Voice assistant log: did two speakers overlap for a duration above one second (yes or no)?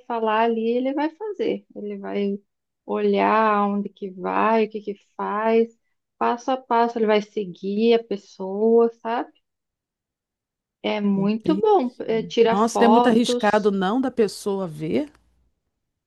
yes